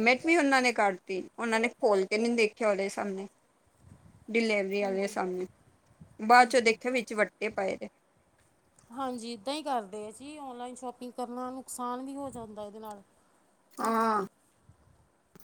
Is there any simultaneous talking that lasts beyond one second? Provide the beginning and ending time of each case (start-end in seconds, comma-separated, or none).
none